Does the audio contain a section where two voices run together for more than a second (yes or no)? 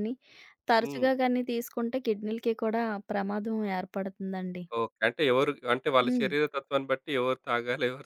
no